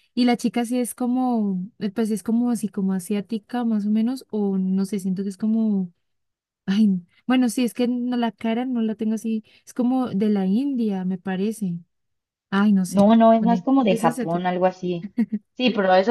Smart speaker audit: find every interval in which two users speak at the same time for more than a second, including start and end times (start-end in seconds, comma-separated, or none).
12.9-14.5